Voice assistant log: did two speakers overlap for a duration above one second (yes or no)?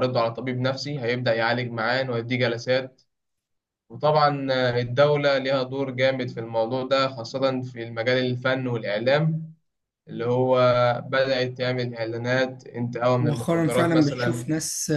yes